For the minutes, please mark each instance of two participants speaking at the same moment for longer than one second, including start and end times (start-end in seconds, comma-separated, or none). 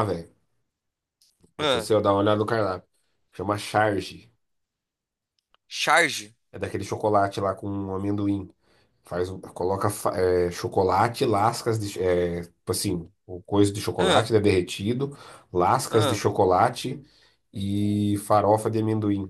none